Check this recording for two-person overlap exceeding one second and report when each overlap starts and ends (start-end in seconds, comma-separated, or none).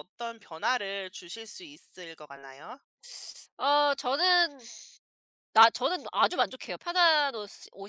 none